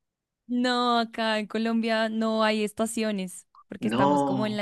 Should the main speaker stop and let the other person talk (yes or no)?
no